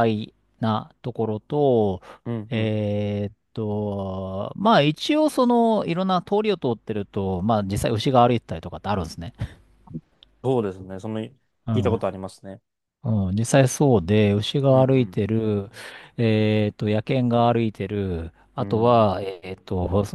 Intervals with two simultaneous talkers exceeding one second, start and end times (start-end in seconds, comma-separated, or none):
none